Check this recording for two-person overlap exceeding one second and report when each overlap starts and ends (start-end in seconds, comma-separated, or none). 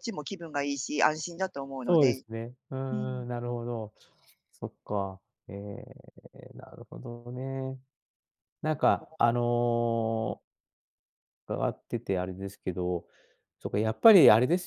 none